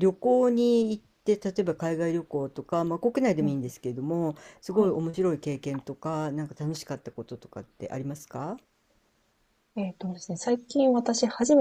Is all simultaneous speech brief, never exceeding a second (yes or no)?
yes